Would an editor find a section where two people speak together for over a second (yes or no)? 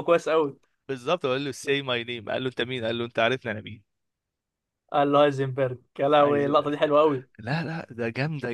no